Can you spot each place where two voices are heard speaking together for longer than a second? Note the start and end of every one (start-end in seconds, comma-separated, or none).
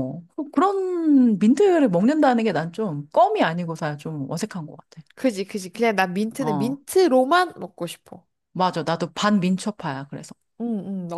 none